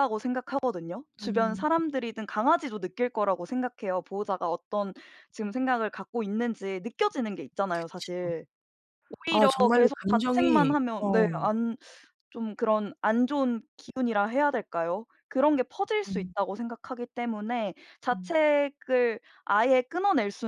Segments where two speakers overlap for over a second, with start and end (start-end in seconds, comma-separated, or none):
9.3-11.4